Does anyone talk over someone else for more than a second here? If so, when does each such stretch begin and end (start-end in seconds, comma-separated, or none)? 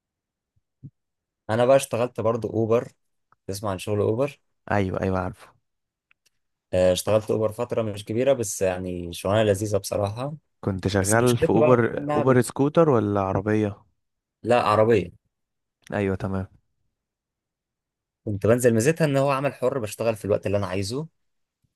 11.0-12.4